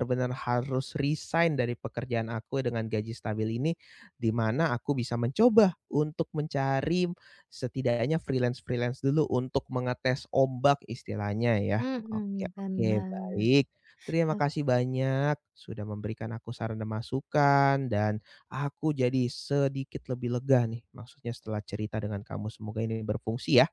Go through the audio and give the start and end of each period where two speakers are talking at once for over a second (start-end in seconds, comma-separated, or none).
11.8-13.4